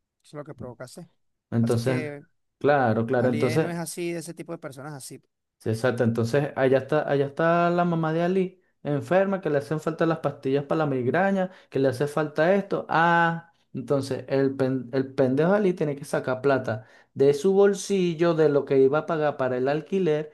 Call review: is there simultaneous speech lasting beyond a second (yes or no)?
no